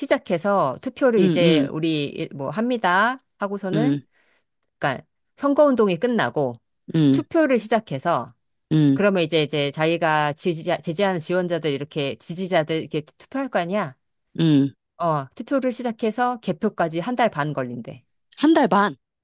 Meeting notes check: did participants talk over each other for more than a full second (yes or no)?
no